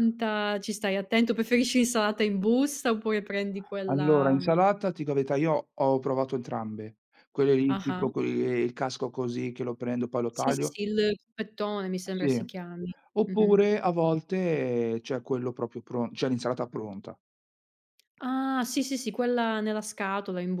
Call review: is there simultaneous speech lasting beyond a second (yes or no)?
no